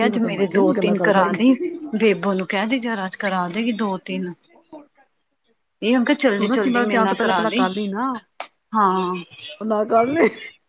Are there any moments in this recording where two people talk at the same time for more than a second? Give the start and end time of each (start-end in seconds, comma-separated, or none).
6.4-8.1